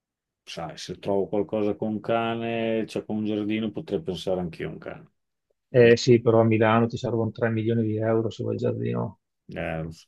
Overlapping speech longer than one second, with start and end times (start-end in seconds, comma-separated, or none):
none